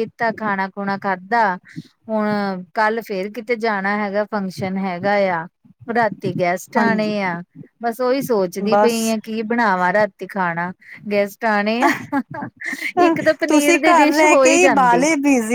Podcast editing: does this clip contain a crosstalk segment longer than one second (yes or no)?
yes